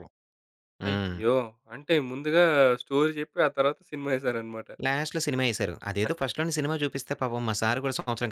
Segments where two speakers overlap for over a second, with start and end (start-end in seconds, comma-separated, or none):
none